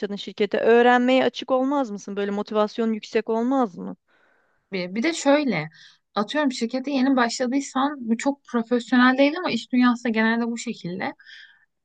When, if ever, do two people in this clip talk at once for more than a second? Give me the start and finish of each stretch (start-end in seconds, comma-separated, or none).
none